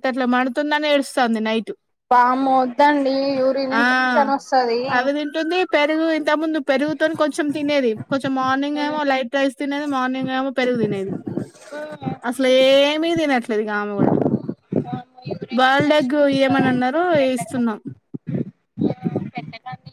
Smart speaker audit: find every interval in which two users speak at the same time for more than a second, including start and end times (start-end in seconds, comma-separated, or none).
15.6-17.6